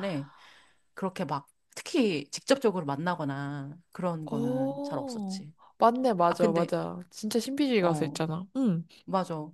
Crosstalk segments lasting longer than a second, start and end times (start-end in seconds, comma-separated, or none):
4.3-5.5